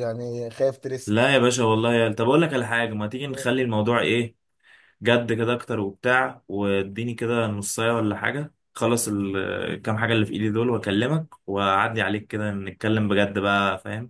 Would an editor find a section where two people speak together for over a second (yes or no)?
no